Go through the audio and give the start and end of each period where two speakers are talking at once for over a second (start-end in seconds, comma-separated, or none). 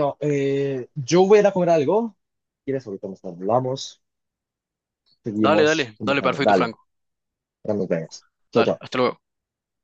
5.4-6.7